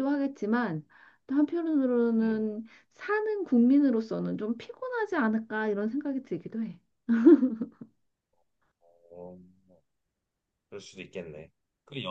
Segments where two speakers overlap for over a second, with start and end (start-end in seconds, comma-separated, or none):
none